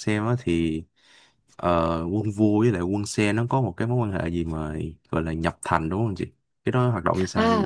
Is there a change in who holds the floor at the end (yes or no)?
yes